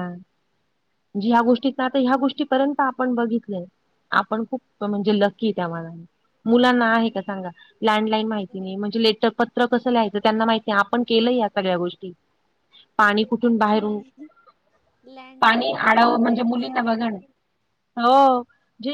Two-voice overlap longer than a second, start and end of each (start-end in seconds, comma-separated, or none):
15.4-17.2